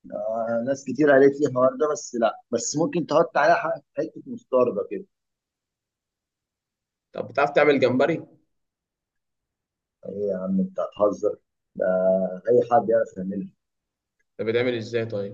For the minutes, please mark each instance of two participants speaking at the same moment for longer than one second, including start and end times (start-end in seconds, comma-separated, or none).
none